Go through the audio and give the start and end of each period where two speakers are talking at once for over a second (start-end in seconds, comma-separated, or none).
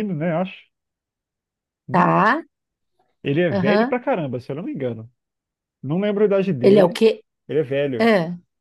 none